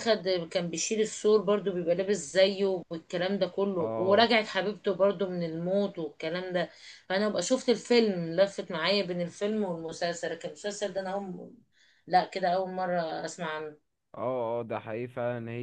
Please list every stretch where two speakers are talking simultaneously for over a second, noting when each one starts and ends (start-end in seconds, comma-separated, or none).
none